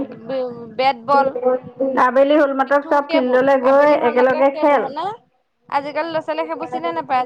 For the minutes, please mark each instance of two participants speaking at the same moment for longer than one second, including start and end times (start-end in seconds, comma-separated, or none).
2.7-4.8